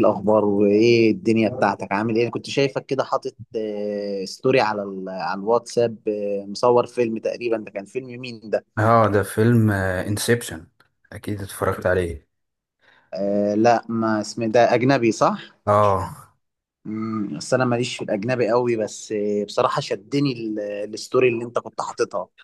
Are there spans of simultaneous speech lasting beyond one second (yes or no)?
no